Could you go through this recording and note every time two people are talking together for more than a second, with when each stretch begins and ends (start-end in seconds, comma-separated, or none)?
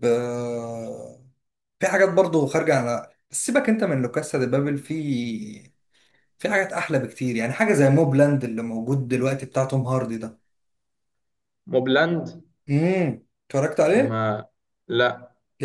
none